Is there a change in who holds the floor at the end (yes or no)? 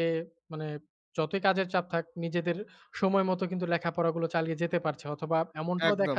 no